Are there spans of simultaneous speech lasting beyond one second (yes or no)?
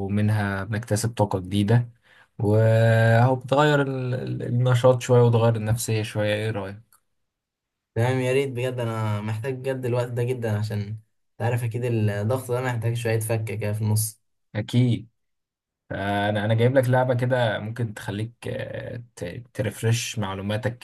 no